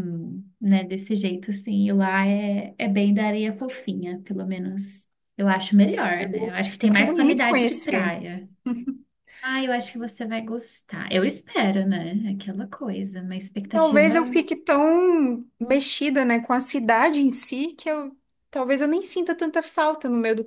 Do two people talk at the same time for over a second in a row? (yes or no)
yes